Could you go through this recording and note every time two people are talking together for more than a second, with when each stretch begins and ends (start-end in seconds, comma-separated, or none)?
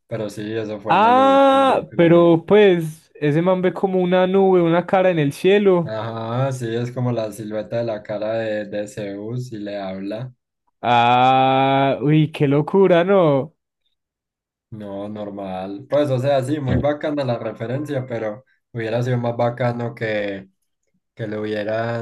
0.9-2.5